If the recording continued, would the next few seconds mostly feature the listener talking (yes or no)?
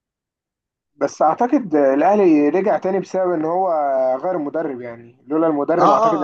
yes